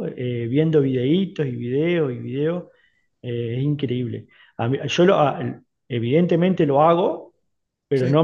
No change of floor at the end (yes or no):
yes